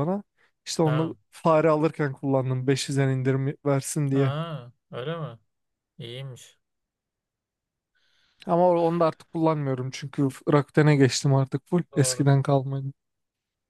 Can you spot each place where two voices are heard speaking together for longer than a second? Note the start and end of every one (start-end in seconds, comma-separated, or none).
none